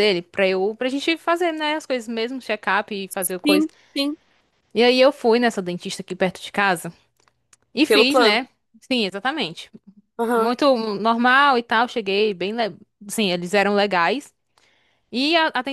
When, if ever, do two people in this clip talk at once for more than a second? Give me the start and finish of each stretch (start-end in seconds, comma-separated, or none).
none